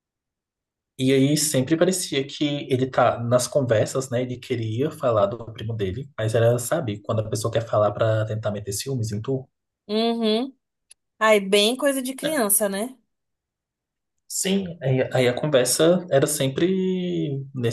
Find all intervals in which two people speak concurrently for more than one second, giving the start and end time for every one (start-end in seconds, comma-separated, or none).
none